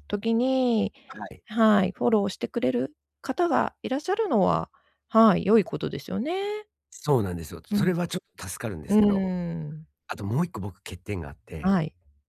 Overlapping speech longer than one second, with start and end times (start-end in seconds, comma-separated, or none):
none